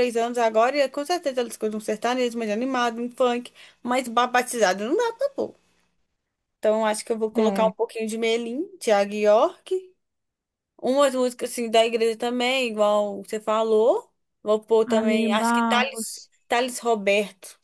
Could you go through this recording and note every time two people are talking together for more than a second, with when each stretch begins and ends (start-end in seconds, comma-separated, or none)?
14.9-16.3